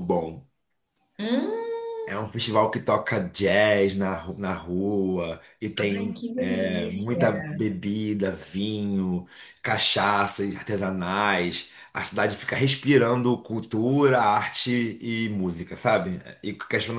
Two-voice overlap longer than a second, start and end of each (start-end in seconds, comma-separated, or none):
6.0-7.2